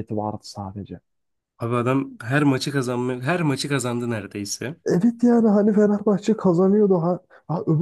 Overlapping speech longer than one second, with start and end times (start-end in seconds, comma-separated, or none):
none